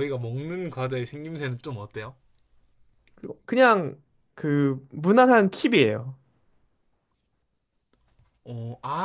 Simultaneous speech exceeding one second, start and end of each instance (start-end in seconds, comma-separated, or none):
none